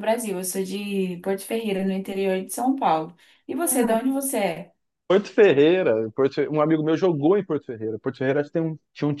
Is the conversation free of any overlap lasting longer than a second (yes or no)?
yes